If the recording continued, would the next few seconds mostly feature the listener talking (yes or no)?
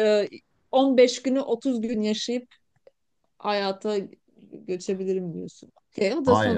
yes